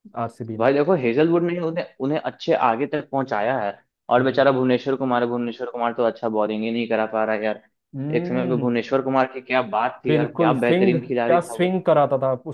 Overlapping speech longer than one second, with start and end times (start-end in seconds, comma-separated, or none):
10.1-11.8